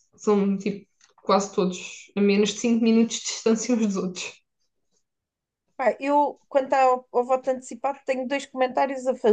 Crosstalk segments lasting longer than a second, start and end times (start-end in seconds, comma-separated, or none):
none